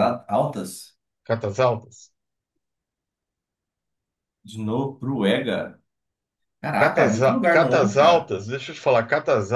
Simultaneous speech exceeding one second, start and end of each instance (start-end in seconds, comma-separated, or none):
6.8-8.3